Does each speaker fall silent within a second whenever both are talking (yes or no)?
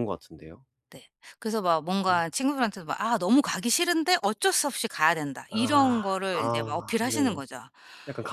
no